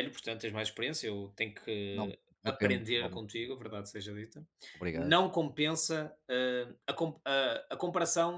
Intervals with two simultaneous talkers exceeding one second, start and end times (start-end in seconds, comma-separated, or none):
1.9-3.5